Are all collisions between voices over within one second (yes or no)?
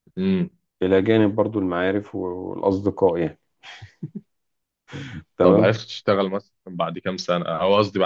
yes